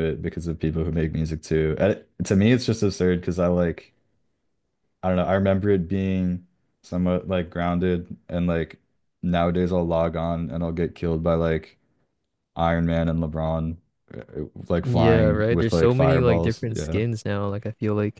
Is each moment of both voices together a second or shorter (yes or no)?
no